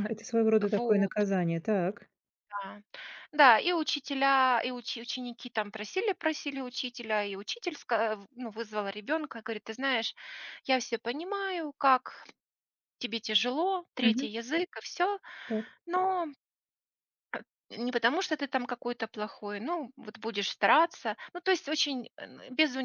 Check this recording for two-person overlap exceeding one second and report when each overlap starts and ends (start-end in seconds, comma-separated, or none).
none